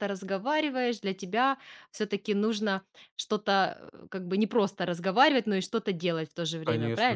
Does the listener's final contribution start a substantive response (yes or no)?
yes